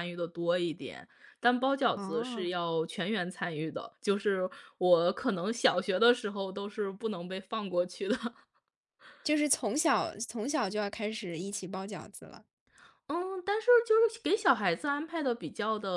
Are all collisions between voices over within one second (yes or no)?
yes